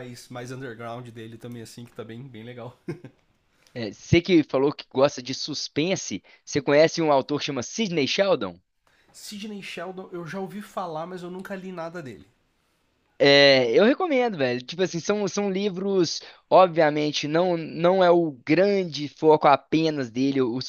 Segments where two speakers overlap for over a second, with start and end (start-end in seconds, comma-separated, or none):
none